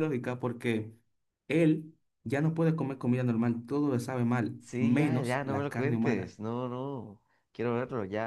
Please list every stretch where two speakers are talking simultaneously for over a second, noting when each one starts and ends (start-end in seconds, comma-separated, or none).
4.6-6.3